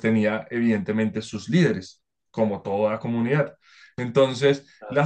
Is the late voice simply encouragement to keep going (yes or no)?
yes